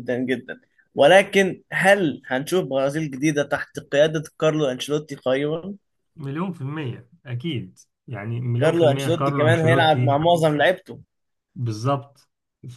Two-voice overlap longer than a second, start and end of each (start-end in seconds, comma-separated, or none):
8.6-10.2